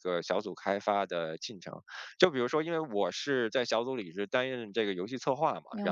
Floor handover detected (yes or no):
no